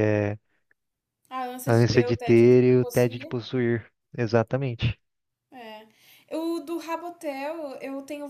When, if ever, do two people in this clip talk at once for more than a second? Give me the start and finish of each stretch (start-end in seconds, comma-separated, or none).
1.7-3.4